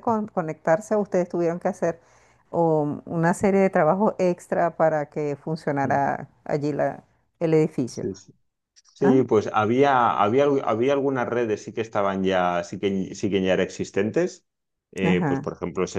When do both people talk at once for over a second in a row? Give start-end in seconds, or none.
none